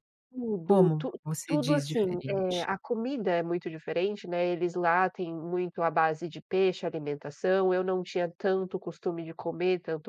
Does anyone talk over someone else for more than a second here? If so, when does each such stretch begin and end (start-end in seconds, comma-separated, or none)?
0.6-2.7